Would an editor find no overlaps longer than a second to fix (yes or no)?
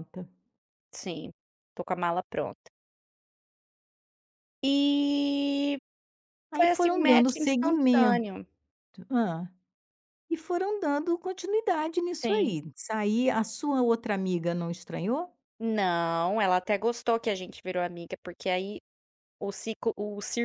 no